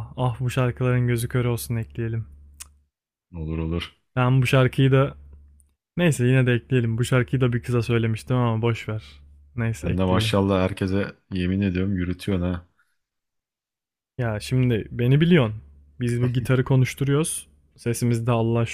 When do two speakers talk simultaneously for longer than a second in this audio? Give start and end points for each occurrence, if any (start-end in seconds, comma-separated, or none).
none